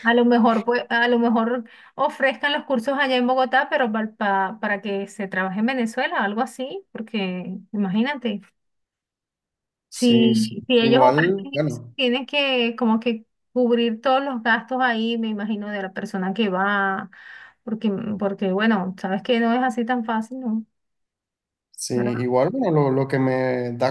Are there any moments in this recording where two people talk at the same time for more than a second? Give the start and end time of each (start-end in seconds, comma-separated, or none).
9.9-11.9